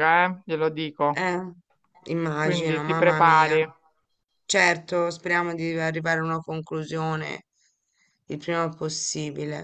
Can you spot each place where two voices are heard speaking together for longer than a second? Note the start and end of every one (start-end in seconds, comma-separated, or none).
2.4-3.6